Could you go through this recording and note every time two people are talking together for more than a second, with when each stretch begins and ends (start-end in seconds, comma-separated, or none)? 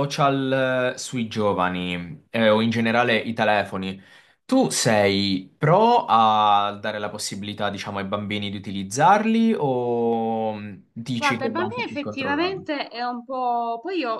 11.2-12.7